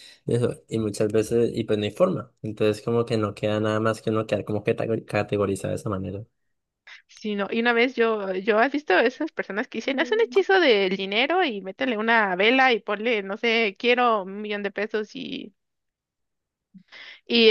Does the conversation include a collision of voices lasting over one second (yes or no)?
no